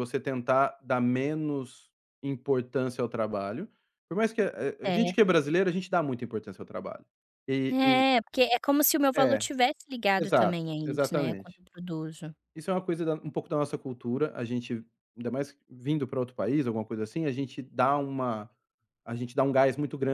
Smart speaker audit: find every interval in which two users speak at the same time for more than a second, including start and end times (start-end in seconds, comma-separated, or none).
10.2-11.6